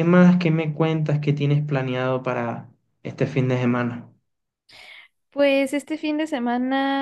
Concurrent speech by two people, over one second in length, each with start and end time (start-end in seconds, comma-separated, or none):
none